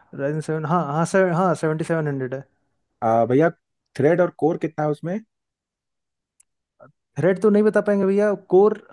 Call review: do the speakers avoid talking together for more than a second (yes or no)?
yes